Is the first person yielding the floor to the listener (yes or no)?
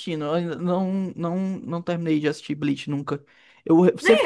no